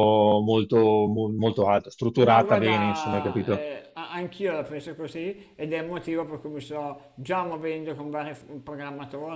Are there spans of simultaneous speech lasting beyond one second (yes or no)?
yes